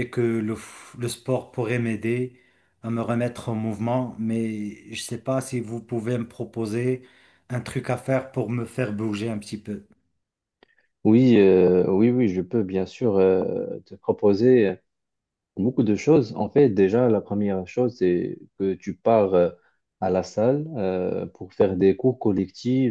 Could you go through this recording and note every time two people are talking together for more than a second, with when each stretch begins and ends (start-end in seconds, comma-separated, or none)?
none